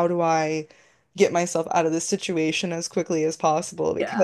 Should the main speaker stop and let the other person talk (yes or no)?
no